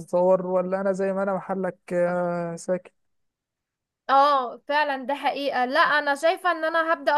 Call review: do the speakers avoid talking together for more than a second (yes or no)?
yes